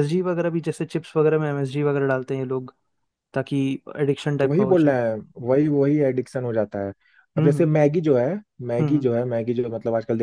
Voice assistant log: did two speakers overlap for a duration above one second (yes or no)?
no